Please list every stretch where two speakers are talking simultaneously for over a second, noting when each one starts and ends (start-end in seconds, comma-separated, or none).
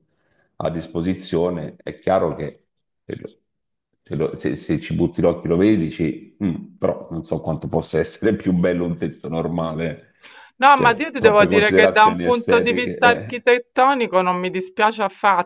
10.7-13.4